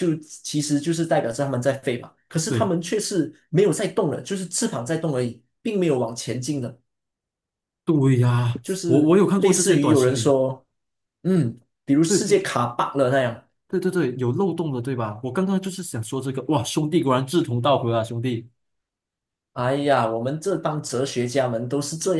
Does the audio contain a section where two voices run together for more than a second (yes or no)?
yes